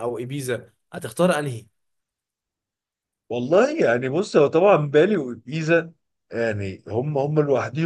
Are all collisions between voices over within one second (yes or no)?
yes